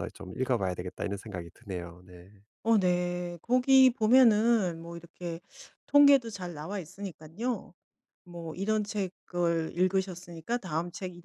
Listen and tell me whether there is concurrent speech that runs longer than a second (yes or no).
no